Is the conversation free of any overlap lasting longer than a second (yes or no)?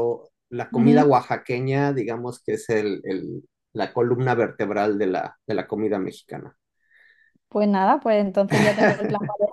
yes